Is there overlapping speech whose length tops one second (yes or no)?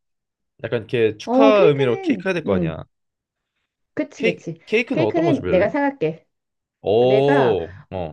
yes